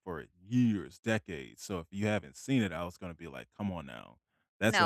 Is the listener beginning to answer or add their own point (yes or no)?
yes